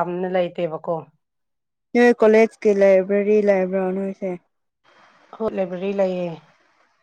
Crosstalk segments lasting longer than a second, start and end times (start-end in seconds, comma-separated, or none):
none